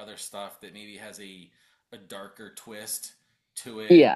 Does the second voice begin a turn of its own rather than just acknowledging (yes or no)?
no